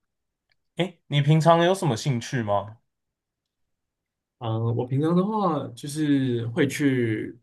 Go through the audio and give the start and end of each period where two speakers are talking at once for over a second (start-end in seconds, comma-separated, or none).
none